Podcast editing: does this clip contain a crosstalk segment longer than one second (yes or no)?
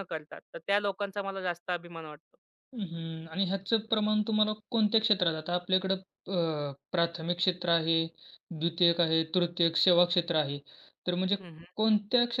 no